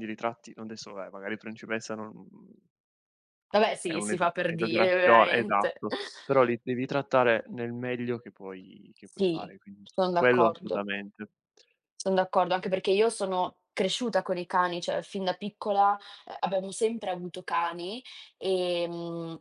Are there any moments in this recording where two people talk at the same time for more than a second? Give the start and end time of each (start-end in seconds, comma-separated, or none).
3.8-5.8, 9.1-10.9